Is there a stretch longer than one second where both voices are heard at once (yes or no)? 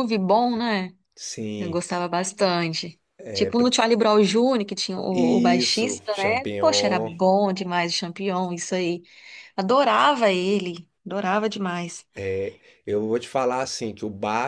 yes